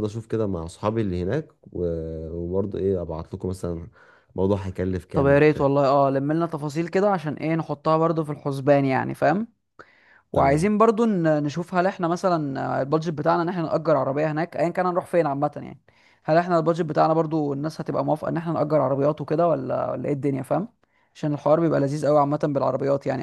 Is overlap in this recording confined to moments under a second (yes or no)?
yes